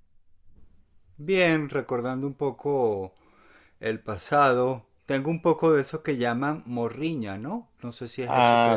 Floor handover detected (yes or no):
yes